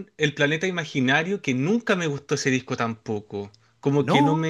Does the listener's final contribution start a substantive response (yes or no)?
no